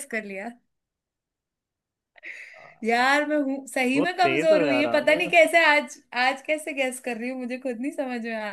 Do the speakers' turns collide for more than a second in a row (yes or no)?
yes